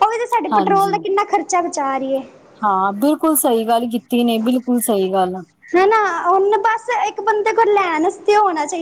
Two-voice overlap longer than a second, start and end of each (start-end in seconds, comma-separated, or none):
none